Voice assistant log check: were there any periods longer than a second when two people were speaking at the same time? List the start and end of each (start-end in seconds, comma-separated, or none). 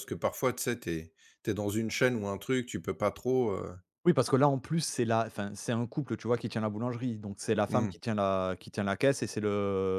none